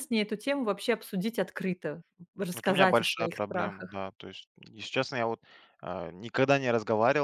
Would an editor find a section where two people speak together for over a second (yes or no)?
yes